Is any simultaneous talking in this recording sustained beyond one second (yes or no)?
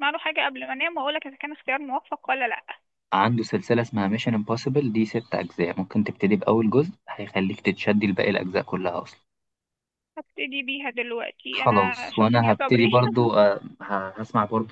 yes